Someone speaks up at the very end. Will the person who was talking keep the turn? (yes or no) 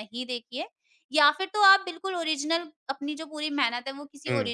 yes